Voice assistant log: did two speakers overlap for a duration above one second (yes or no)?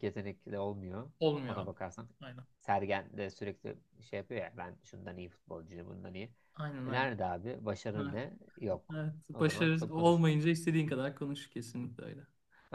yes